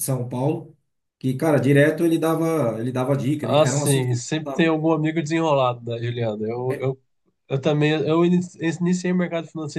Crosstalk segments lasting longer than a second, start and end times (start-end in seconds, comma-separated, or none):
3.4-4.7